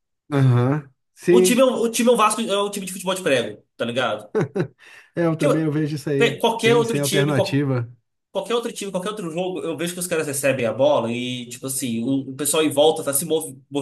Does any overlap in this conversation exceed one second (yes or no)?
yes